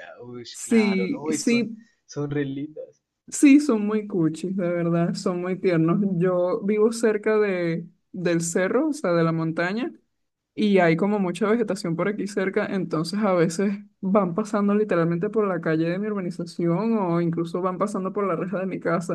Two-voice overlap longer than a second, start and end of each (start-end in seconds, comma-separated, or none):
0.5-1.8